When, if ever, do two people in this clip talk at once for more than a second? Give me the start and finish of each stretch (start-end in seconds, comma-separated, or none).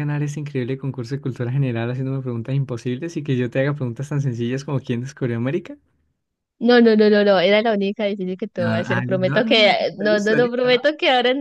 8.6-10.8